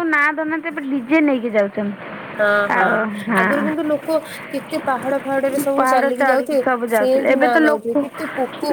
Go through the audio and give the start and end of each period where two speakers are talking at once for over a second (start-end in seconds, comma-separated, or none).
5.8-7.9